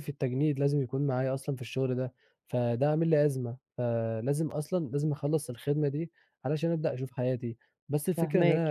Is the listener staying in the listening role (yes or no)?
no